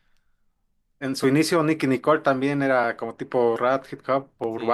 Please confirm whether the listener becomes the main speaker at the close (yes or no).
yes